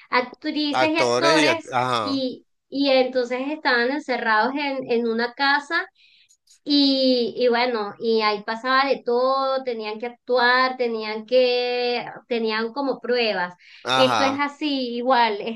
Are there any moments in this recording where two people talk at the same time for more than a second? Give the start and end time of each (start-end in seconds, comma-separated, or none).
0.7-2.2